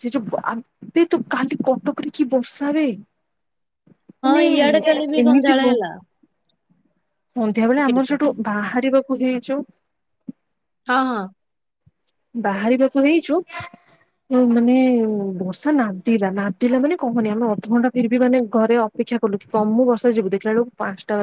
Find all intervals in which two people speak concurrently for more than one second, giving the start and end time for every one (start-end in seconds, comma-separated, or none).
none